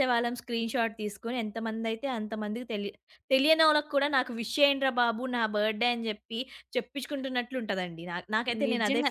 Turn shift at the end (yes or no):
yes